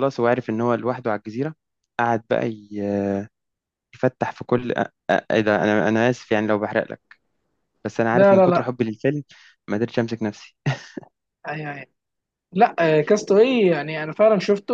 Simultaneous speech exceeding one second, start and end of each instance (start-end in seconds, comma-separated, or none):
none